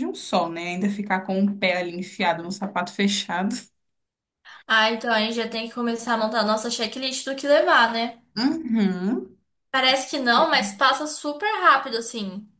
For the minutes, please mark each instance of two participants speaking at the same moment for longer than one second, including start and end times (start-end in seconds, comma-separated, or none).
none